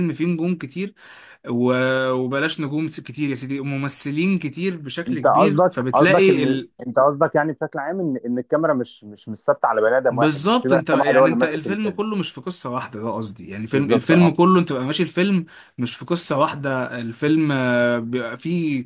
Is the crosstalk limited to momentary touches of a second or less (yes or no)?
no